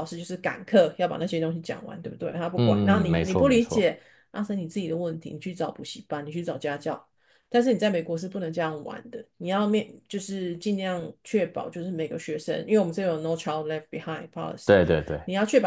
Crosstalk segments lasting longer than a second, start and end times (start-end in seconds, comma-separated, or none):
2.5-3.9